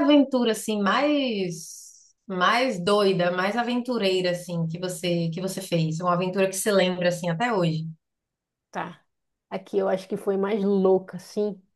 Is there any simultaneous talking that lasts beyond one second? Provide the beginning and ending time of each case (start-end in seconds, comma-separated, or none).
none